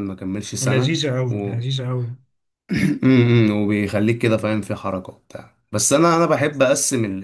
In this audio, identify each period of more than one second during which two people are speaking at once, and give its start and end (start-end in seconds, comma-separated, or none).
none